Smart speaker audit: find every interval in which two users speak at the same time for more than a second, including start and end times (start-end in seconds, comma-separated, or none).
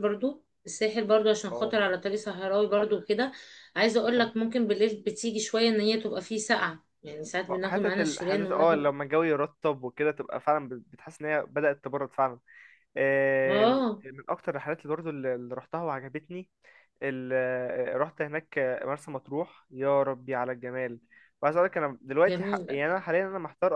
7.6-8.9